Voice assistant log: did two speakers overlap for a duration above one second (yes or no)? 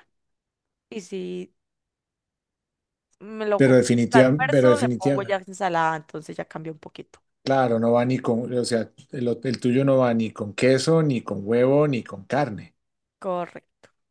yes